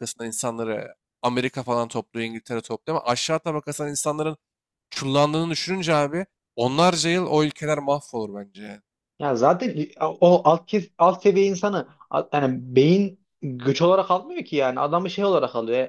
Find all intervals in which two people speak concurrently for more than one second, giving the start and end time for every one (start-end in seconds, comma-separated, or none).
none